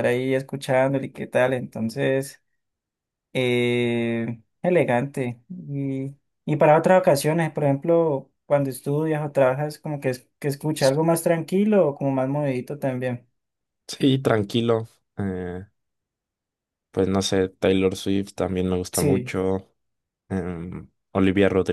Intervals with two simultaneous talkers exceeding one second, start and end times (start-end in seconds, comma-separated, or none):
none